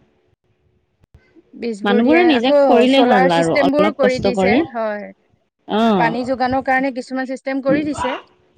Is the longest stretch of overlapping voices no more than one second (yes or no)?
no